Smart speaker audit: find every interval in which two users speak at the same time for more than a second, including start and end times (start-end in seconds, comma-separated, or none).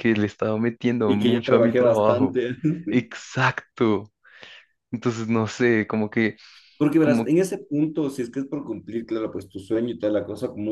1.1-2.4